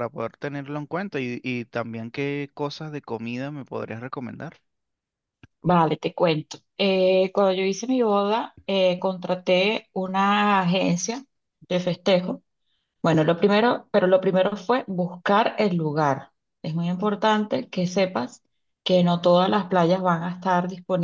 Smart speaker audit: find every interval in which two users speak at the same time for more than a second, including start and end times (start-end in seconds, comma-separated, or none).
none